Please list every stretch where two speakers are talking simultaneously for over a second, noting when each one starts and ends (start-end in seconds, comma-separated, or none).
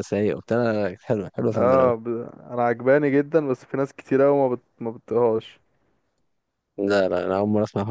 none